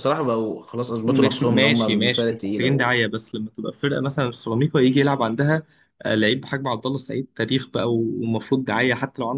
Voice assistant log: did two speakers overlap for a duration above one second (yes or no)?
yes